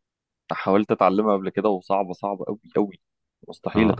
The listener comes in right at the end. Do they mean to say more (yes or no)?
yes